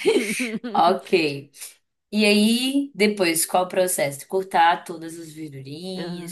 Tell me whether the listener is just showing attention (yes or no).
no